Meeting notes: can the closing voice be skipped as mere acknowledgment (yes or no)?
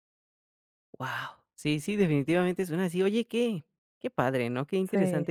yes